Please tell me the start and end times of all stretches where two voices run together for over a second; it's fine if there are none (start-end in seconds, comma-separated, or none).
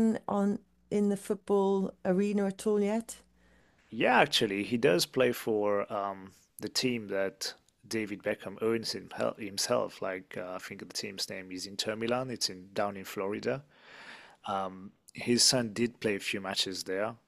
none